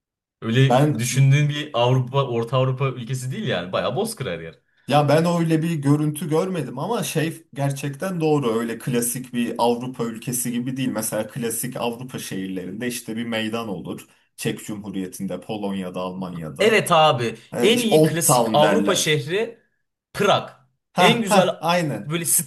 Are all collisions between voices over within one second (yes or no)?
no